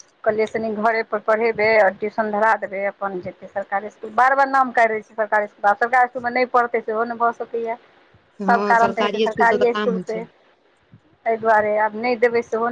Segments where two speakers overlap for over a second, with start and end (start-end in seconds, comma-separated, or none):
8.5-10.2